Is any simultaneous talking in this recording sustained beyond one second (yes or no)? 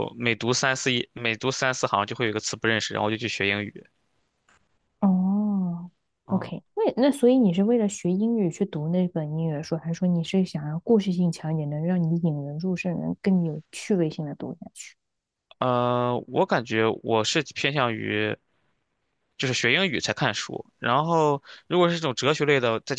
no